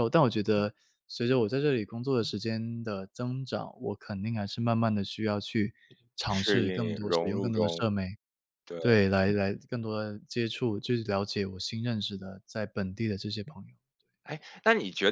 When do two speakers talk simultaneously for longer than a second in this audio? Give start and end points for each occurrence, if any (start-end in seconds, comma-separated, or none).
6.3-7.8